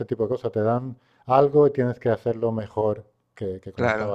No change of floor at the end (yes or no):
no